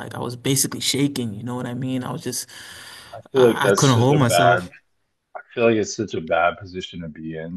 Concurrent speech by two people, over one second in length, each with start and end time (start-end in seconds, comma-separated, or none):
3.4-4.7